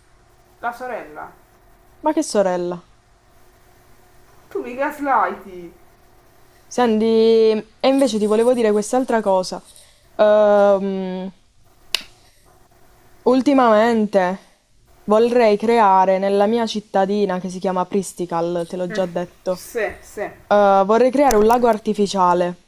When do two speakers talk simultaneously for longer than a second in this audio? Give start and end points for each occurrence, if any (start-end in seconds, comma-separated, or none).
none